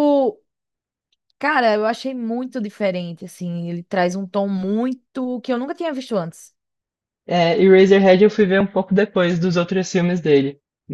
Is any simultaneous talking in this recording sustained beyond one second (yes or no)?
no